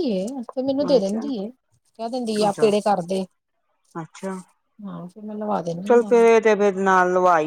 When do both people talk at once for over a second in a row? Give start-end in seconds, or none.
none